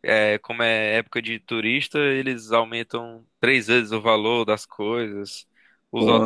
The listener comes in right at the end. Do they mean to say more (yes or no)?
no